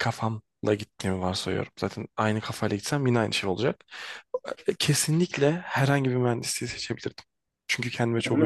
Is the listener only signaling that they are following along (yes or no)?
yes